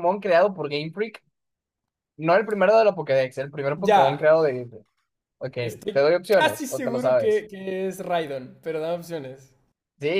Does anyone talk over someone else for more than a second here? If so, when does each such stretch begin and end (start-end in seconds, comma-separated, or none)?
5.9-7.4